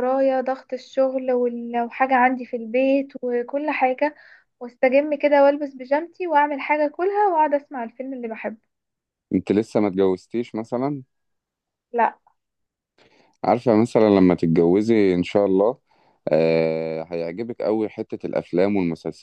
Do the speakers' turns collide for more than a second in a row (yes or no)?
no